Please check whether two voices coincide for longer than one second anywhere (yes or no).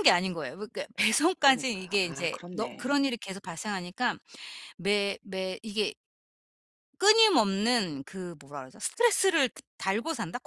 yes